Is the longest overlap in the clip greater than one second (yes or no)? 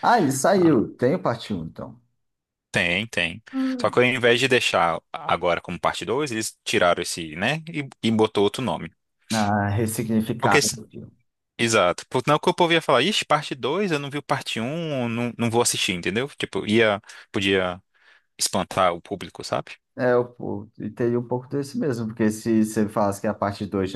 no